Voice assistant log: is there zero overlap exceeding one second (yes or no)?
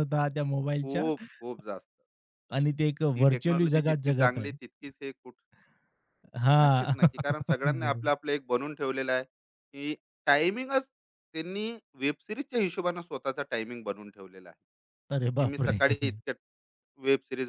no